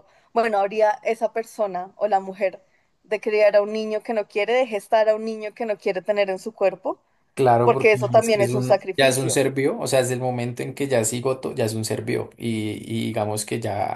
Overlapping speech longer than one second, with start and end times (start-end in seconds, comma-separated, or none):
7.6-9.4